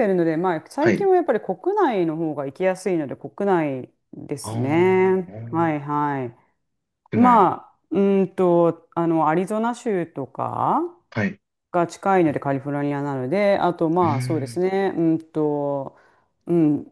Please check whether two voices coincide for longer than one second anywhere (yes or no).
yes